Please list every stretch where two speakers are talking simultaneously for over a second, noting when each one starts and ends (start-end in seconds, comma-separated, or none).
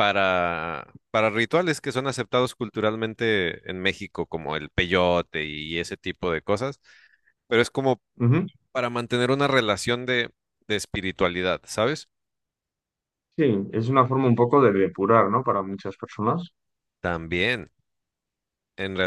none